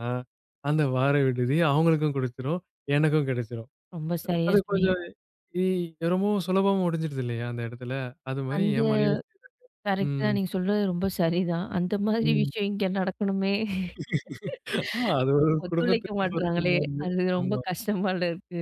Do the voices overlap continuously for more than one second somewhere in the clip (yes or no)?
yes